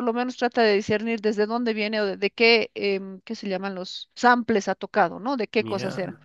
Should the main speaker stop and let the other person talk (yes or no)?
no